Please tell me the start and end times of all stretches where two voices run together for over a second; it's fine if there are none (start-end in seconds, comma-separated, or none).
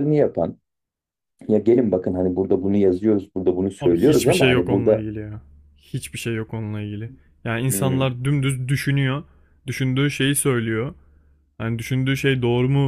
3.8-5.0